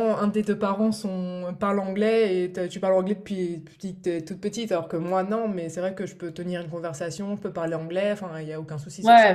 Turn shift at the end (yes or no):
yes